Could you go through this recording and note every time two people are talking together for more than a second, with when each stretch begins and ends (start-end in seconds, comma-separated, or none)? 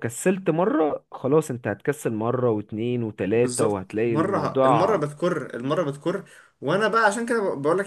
3.4-5.1